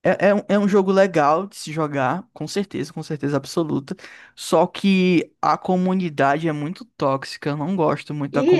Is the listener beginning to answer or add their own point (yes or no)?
yes